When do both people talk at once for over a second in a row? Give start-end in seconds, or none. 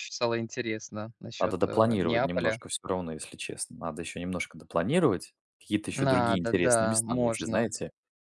1.4-2.6, 5.9-7.7